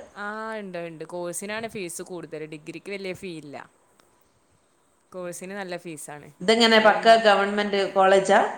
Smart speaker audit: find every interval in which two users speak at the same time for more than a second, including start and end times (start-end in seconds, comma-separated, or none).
none